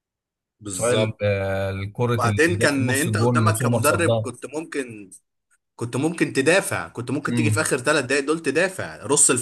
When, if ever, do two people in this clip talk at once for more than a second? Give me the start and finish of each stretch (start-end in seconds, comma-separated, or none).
2.2-4.3